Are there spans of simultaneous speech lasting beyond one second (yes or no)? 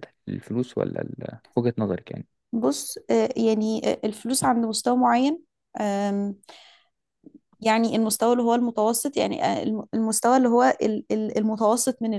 no